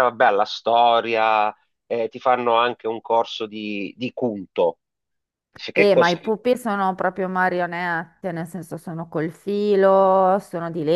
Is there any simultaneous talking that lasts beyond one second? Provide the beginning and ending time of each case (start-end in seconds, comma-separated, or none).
none